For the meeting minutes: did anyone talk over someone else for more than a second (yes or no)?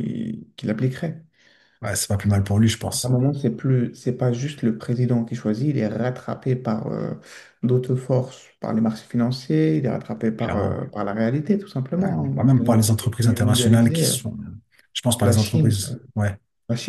yes